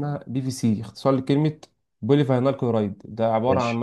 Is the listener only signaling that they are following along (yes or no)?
yes